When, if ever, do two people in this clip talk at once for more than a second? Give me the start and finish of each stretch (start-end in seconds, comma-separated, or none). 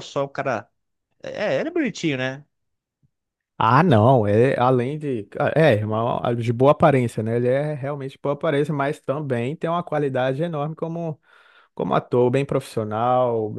none